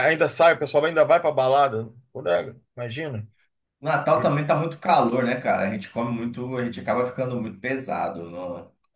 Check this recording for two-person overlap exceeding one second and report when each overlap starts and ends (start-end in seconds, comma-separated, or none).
none